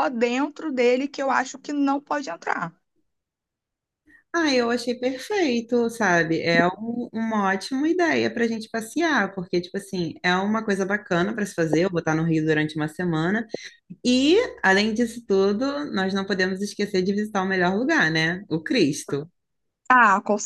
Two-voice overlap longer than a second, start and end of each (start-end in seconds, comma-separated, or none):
none